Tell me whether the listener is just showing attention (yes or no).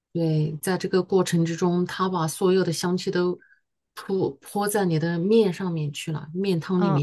no